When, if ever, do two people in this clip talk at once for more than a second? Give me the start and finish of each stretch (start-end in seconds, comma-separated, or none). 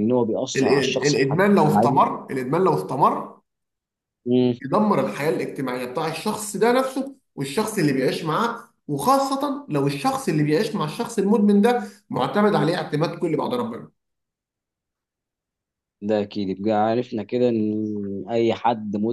0.6-2.0